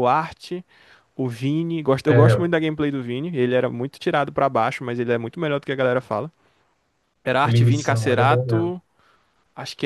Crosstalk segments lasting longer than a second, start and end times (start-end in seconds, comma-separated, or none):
7.4-8.7